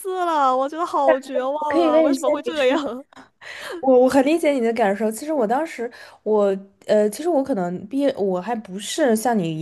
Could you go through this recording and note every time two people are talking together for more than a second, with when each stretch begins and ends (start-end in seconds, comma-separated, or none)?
1.0-2.7